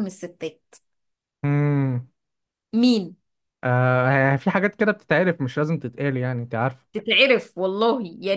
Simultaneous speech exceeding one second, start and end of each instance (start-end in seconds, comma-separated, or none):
none